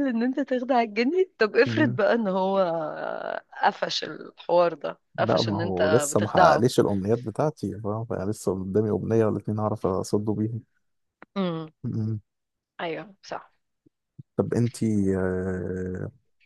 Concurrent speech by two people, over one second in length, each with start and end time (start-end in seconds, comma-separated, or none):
5.2-6.7